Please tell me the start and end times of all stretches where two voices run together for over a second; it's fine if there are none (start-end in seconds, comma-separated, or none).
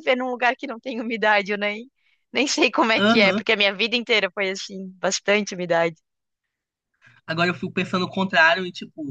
none